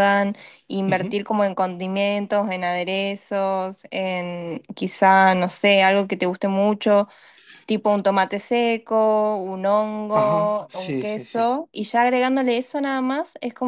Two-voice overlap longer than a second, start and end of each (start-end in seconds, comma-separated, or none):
10.1-11.5